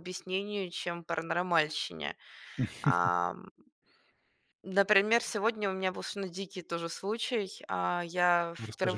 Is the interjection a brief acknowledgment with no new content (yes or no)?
yes